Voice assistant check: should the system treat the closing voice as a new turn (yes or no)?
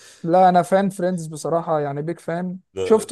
no